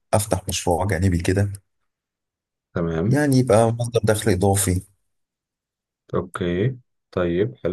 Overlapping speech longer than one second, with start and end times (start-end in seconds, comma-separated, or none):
none